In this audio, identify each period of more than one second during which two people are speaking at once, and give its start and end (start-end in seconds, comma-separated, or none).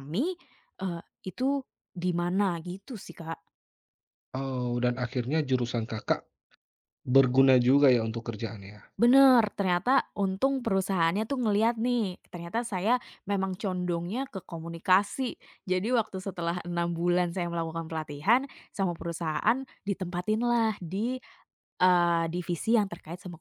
none